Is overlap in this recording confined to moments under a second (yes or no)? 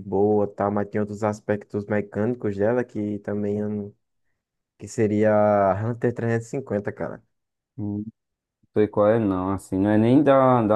yes